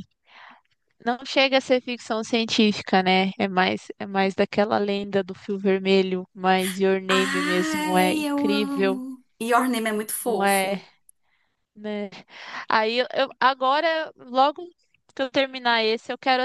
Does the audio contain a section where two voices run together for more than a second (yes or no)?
yes